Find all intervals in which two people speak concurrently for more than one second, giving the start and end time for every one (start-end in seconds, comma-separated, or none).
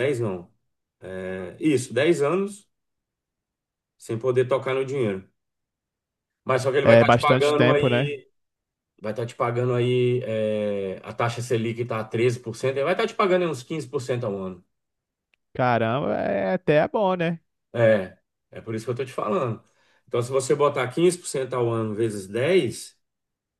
6.8-8.1